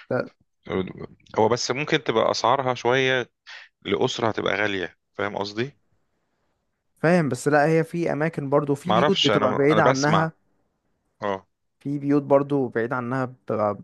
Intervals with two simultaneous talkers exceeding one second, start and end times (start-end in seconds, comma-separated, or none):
8.9-10.3